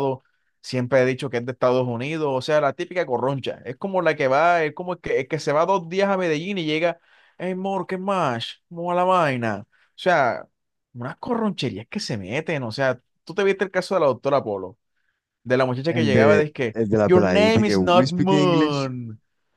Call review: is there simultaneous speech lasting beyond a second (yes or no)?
yes